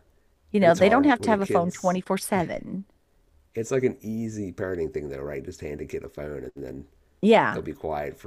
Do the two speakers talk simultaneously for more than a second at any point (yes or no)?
yes